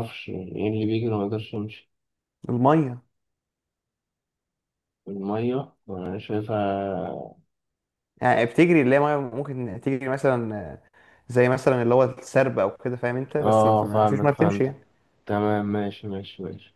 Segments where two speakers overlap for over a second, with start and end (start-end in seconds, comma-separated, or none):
13.4-14.8